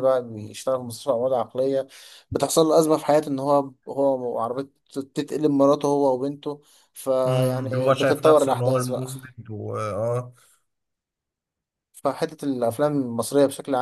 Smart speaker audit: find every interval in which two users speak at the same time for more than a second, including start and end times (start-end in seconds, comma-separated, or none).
7.2-9.1